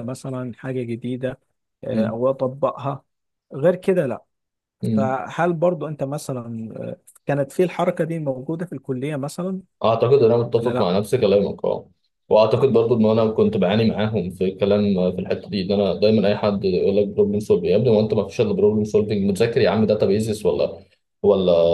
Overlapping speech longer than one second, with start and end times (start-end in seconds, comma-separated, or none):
none